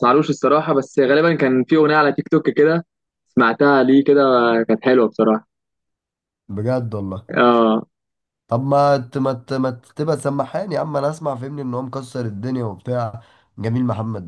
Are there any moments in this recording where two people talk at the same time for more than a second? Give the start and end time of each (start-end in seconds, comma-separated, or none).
none